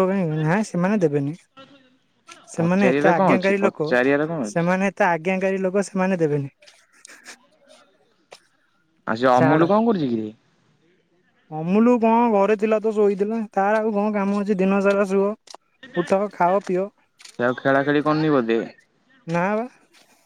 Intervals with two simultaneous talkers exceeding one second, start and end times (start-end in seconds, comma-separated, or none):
2.6-3.9